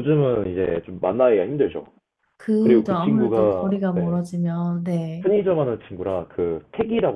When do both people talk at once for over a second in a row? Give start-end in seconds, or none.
2.6-4.2